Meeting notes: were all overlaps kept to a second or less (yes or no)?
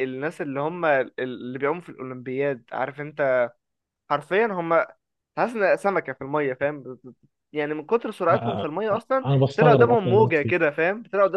no